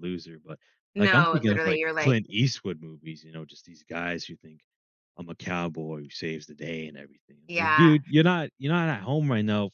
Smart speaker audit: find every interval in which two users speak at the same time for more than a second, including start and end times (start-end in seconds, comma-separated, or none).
1.0-2.2